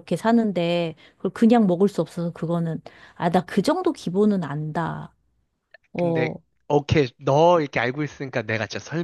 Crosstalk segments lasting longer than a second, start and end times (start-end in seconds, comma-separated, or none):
none